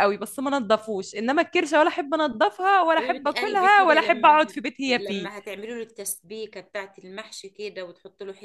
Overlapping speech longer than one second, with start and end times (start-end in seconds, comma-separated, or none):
3.0-5.3